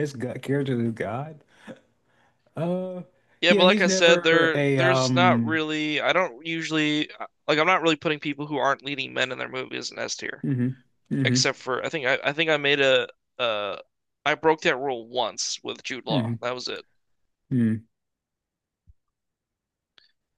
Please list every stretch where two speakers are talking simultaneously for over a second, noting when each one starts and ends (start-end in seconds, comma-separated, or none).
3.5-5.6